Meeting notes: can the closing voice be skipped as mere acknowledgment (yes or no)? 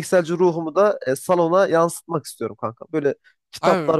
yes